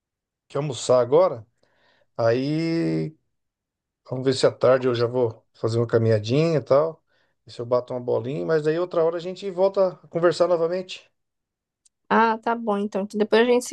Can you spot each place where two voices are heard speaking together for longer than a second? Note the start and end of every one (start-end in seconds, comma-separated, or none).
none